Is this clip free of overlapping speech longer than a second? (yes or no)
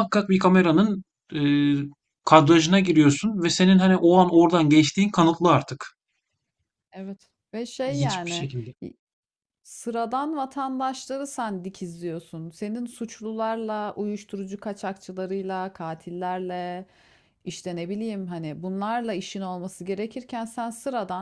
yes